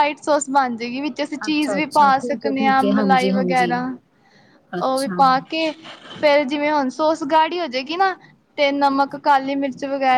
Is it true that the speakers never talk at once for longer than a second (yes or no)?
no